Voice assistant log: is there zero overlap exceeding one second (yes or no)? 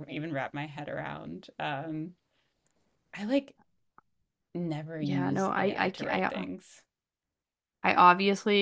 no